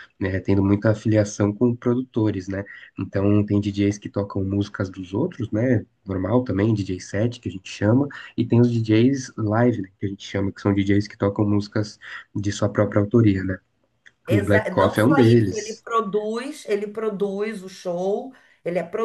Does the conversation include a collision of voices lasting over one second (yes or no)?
yes